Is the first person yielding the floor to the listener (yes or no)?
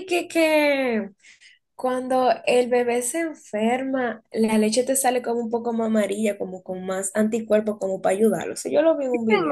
yes